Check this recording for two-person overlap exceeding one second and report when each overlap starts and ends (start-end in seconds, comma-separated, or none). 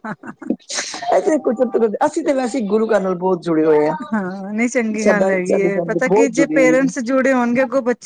5.0-6.9